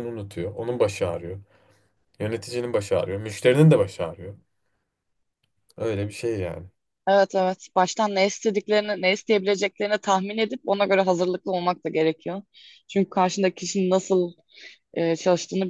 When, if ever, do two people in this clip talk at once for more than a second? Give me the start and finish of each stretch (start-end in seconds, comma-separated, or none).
none